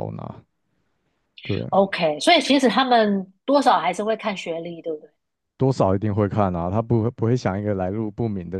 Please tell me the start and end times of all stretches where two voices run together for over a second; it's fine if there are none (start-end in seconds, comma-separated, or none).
none